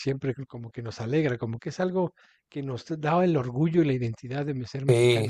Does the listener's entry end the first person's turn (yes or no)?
yes